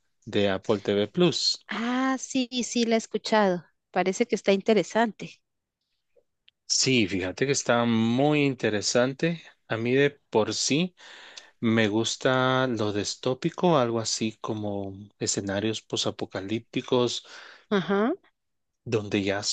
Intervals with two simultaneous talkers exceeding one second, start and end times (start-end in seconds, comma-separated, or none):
none